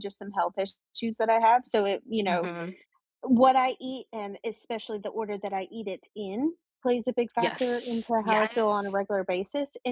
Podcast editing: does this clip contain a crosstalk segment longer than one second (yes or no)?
yes